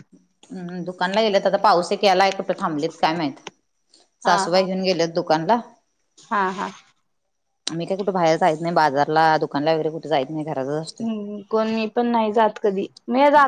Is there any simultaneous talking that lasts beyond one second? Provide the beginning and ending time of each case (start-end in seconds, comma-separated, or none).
none